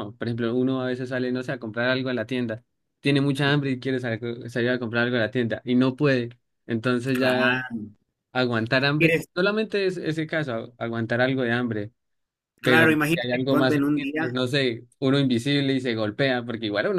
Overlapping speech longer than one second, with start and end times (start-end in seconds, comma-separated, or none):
12.6-14.4